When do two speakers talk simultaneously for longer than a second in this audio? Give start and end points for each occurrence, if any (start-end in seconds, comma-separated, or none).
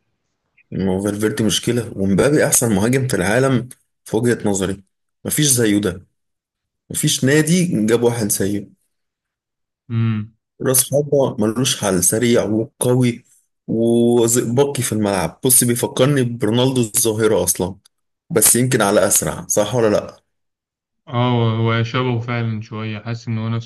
none